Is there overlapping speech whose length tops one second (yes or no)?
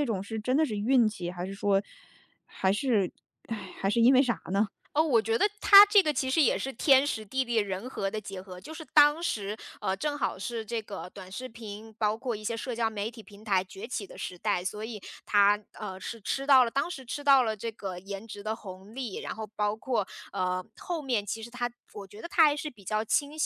no